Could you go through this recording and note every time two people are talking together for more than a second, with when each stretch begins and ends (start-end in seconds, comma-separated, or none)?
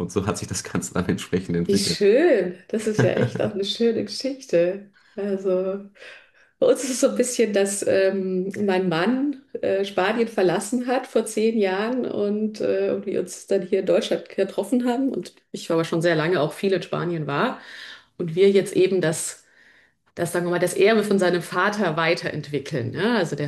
none